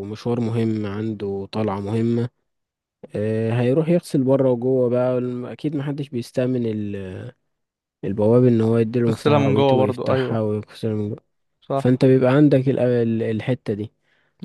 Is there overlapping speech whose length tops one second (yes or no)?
yes